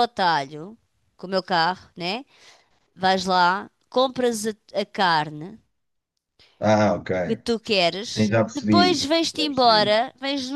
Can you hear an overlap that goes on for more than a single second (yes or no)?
yes